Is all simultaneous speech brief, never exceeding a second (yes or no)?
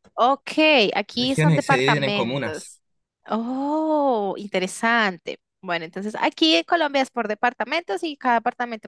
no